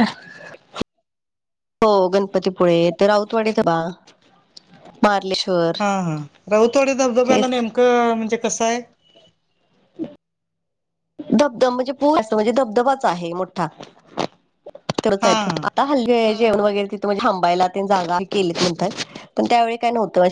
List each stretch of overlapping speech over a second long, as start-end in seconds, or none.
none